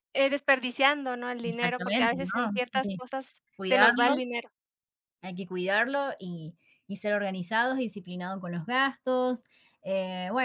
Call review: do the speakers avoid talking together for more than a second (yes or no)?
no